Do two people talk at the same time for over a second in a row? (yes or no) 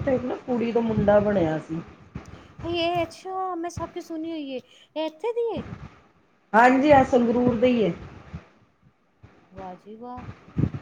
no